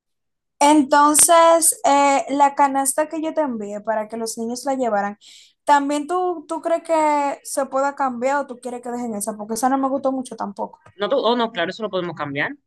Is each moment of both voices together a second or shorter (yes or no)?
yes